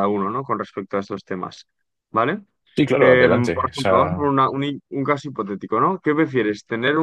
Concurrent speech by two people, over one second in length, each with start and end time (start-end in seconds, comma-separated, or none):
3.0-4.3